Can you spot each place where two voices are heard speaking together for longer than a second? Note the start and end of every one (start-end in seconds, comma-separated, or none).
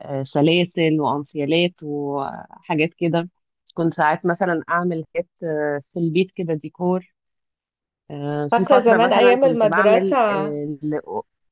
8.5-10.2